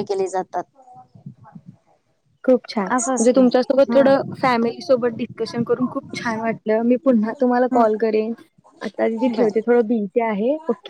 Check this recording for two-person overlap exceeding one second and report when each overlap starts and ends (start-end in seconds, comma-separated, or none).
2.9-4.5